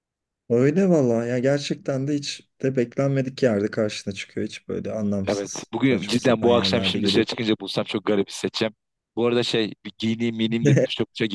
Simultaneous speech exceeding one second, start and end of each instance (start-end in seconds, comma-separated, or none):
5.2-7.2